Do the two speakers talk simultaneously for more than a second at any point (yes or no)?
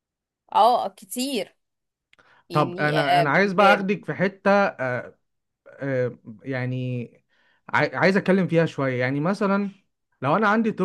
yes